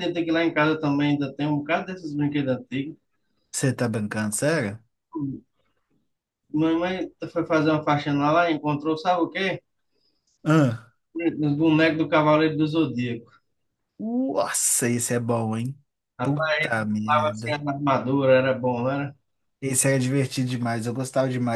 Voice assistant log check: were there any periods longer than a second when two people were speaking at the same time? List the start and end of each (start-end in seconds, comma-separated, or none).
16.2-17.6